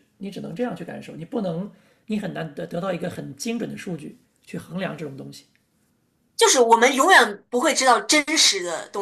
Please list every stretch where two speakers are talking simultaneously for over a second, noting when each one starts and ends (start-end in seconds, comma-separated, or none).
none